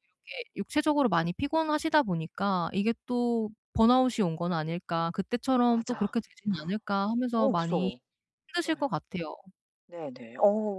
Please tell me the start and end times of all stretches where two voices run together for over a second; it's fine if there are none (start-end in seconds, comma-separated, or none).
none